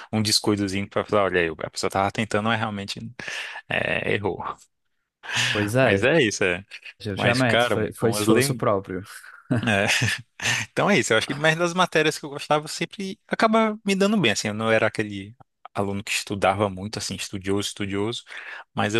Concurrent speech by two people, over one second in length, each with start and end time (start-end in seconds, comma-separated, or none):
7.2-8.7